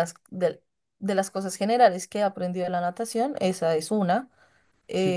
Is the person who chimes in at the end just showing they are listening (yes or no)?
yes